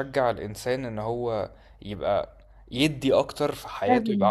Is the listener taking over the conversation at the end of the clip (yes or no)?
no